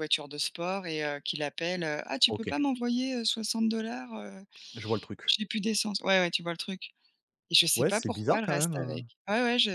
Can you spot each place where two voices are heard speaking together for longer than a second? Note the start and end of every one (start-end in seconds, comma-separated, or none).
7.7-9.0